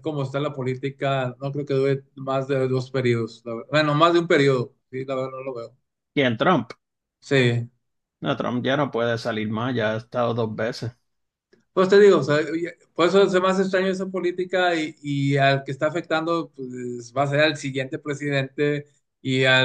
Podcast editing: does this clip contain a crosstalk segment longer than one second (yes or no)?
no